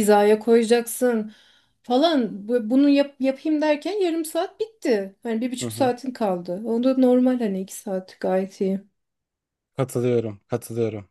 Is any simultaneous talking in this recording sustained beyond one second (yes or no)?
no